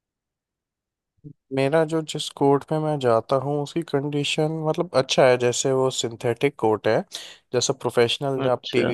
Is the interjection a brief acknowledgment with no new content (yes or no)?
yes